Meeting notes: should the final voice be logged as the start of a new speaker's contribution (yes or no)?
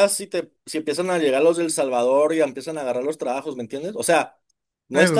no